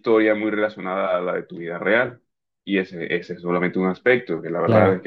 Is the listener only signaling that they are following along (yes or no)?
no